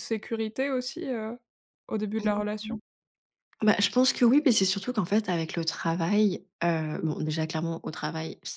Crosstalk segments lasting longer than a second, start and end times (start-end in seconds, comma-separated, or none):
none